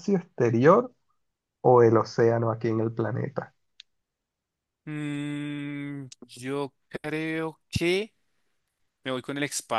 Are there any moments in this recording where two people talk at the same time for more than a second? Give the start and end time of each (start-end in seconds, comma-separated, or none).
none